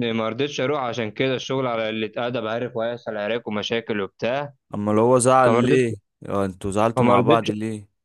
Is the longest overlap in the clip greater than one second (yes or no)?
no